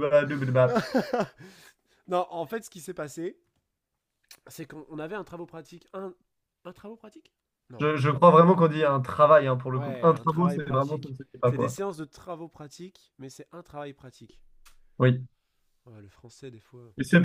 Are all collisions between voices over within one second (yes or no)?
no